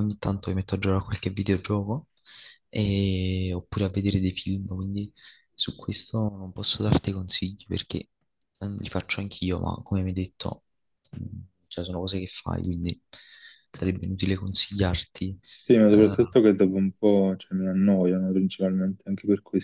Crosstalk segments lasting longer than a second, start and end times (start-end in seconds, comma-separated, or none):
none